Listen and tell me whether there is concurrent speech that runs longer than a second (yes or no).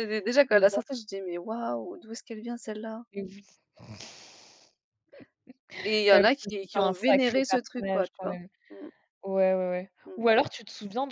yes